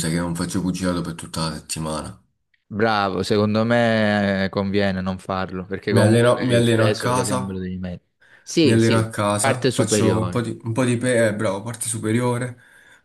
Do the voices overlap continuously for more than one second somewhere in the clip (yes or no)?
yes